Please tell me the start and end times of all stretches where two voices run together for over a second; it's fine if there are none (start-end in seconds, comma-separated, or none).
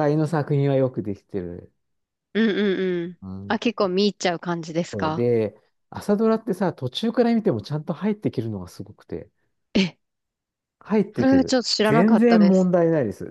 11.2-12.7